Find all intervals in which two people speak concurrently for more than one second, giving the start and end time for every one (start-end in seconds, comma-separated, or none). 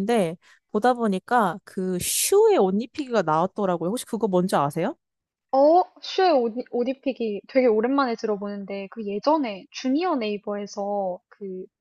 none